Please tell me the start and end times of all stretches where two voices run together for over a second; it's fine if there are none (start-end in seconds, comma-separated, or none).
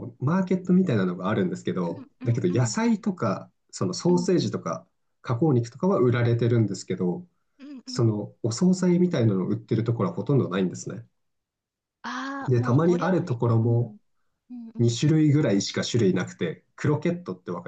12.5-14.0